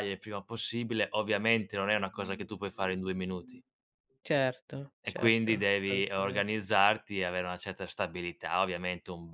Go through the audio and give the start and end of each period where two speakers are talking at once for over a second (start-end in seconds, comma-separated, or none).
5.1-6.5